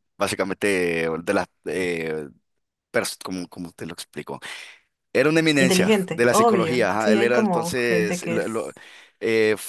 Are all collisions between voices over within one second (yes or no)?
no